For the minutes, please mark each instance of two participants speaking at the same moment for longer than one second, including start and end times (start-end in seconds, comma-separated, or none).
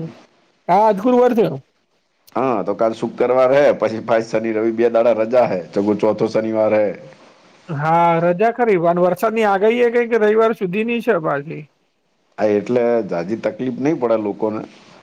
none